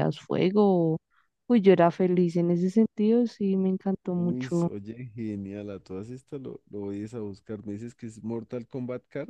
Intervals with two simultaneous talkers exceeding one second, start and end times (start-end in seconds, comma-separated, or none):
none